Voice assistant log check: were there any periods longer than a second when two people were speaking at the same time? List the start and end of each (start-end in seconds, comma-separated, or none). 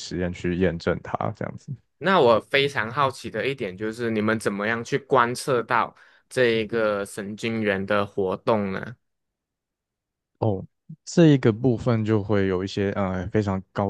none